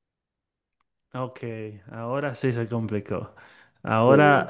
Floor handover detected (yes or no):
no